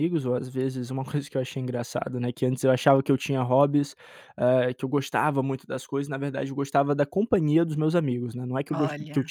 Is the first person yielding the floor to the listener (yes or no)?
no